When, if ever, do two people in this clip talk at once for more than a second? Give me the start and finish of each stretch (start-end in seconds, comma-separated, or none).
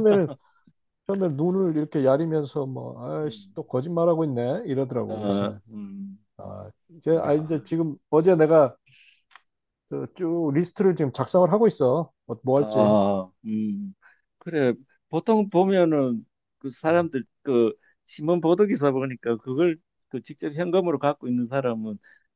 none